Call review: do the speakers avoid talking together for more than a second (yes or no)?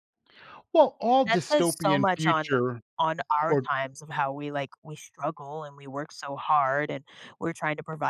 no